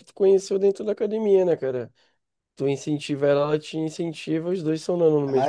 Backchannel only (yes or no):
no